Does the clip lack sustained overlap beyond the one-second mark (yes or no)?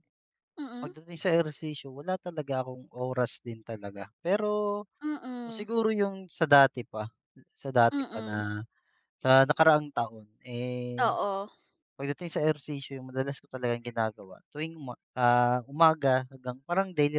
yes